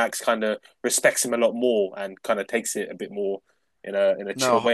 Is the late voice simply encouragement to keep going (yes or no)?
no